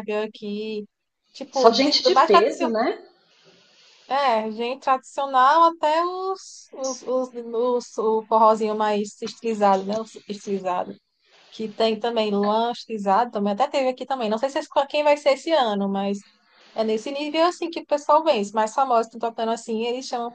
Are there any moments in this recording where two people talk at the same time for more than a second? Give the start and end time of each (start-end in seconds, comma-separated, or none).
1.5-2.7